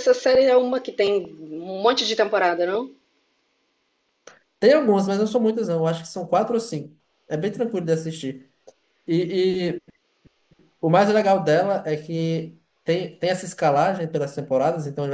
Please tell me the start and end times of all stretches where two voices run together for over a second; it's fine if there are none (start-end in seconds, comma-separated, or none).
none